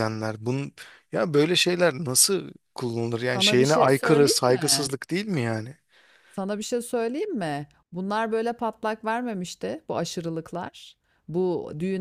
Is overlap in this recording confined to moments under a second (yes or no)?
no